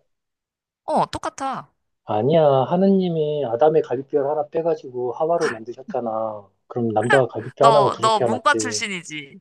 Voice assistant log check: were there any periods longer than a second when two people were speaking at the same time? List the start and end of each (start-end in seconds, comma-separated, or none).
7.6-8.8